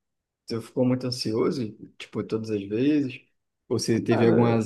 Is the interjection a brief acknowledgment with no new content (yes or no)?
yes